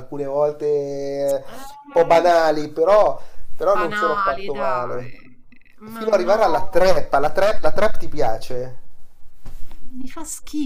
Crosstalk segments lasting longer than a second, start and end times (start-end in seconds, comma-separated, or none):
3.7-5.1